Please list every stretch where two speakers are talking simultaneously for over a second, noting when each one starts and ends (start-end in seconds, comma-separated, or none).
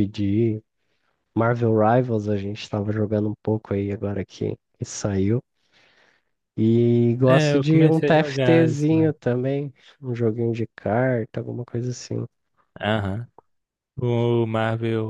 7.3-9.1